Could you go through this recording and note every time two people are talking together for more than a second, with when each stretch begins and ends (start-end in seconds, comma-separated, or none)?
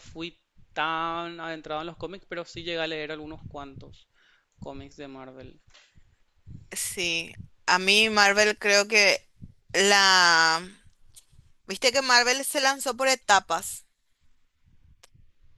none